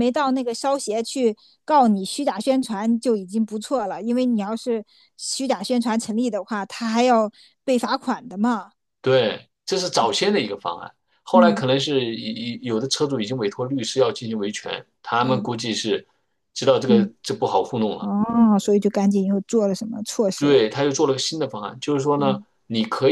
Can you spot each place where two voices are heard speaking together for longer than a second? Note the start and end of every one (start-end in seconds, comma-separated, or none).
none